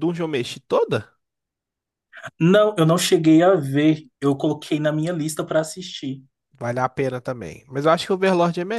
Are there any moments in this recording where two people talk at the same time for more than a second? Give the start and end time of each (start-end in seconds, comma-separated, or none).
none